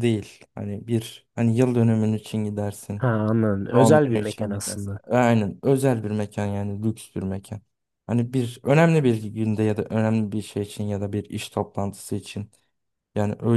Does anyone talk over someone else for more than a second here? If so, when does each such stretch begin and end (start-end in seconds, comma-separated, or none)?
3.7-5.0